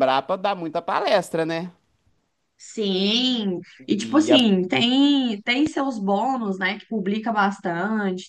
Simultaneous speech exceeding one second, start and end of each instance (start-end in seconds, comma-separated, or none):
none